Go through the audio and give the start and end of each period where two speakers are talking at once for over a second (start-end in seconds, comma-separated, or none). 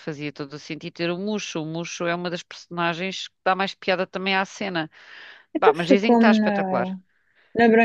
5.5-6.9